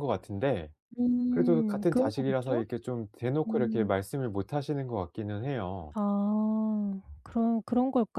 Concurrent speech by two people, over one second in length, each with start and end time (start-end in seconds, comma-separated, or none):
1.3-2.6